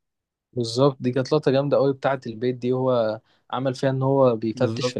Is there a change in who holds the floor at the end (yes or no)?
no